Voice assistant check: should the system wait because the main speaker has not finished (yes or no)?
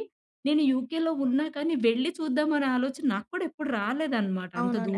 no